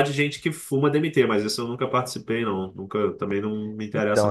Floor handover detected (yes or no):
yes